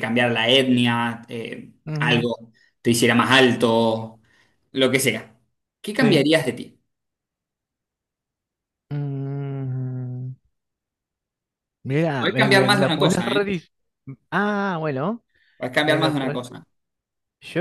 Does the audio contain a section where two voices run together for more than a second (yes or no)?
yes